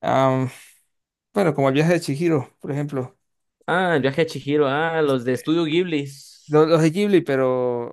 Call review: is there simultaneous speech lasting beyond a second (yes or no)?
no